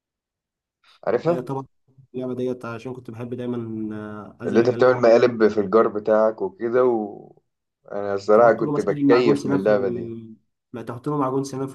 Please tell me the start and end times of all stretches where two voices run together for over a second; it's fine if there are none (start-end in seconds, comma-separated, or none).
8.3-10.1